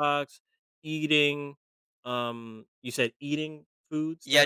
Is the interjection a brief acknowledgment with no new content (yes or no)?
no